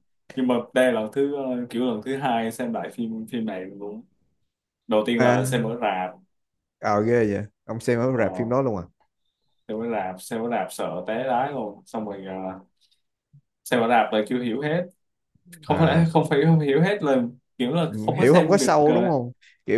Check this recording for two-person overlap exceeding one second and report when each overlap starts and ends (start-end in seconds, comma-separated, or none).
17.9-19.2